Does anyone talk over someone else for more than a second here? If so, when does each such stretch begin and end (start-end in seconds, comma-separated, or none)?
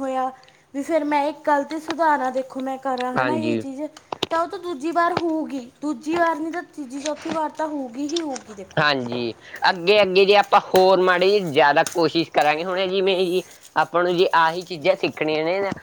none